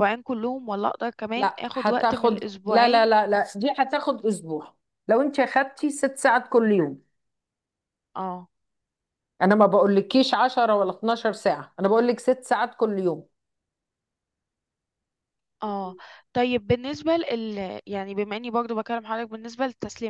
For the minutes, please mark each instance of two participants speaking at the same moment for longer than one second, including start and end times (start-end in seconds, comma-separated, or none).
1.4-3.1